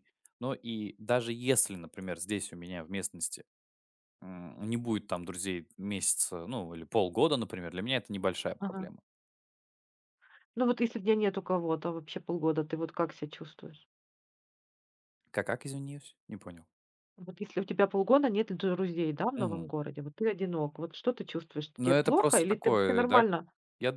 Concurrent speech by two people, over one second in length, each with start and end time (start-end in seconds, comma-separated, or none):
21.8-23.2